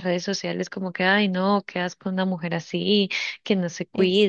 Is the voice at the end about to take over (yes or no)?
no